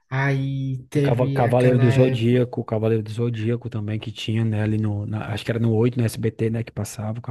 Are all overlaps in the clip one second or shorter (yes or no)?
no